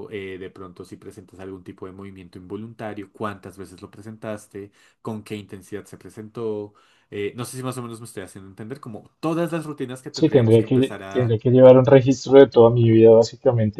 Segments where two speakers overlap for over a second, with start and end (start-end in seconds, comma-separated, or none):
10.1-11.4